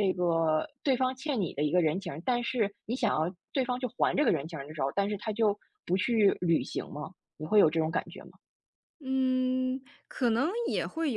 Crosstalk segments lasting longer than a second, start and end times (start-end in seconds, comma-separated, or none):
none